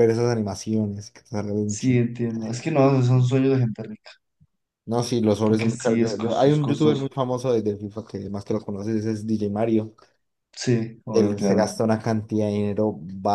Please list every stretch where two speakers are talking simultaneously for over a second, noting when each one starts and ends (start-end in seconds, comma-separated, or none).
5.5-7.1